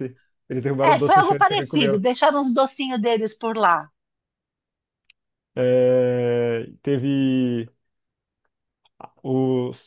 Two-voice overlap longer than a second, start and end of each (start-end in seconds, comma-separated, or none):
0.8-2.0